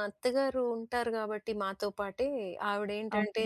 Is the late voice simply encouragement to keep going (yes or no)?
yes